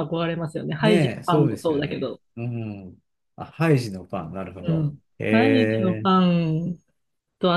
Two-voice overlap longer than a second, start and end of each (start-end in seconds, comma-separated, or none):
0.8-2.2, 4.7-6.2